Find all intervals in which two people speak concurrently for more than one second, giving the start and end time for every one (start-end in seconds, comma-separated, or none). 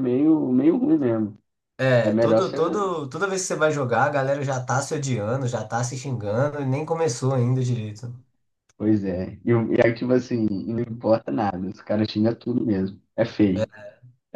none